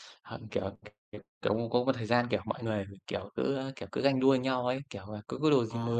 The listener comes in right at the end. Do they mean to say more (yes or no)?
no